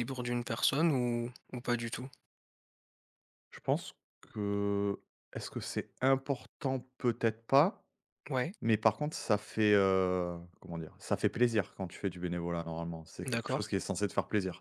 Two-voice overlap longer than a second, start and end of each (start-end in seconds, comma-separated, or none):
none